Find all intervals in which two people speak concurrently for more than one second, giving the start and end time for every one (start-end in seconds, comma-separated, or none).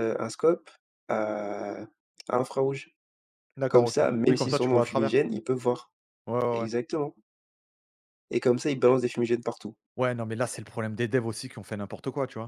3.7-5.1